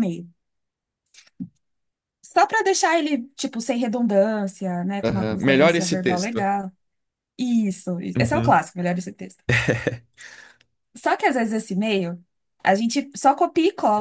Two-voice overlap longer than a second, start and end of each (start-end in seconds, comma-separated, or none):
5.0-6.4